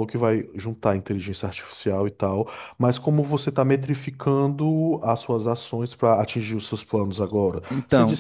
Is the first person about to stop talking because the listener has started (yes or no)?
no